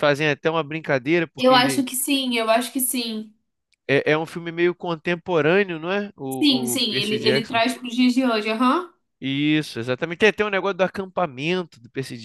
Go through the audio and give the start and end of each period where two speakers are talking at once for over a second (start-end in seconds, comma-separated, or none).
6.3-7.6